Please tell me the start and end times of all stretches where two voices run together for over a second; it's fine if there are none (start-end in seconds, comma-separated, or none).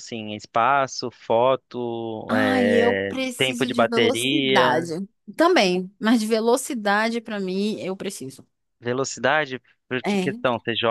2.3-4.8